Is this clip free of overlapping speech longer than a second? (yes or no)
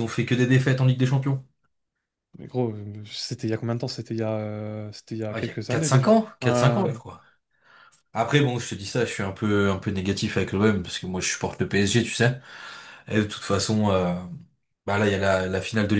no